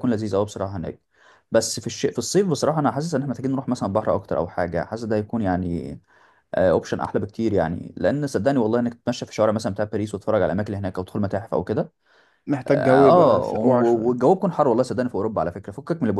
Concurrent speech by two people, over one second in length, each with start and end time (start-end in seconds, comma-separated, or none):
12.7-14.2